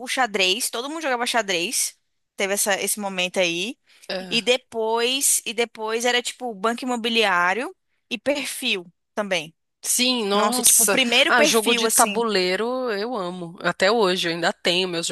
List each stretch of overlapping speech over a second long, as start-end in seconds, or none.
10.3-12.2